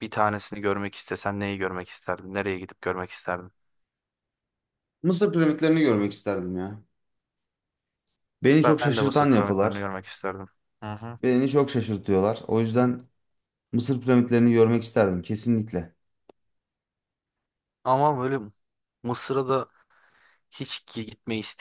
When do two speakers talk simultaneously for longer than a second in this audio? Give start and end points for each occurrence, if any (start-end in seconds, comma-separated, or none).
8.6-9.9